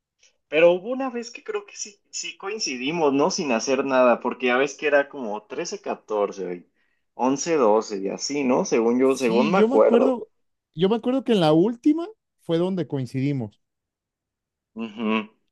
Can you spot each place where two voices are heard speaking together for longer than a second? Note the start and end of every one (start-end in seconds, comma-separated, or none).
9.0-10.2